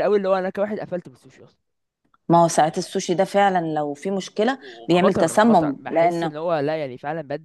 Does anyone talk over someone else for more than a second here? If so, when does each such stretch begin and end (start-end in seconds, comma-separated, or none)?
4.6-6.3